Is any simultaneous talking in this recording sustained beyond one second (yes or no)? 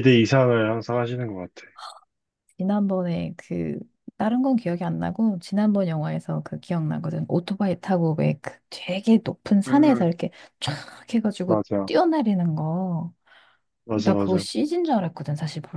no